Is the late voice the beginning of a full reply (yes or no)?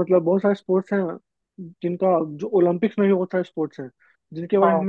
no